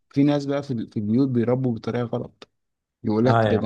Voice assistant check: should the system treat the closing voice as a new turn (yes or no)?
no